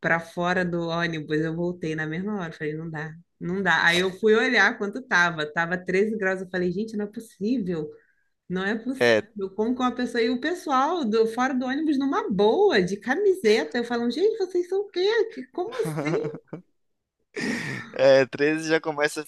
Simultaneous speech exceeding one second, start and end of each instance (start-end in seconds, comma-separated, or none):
none